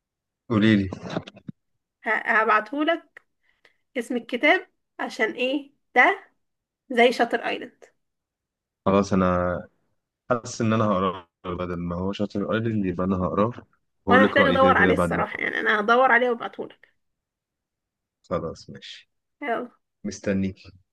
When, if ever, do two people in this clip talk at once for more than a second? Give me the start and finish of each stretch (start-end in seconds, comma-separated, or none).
14.1-15.5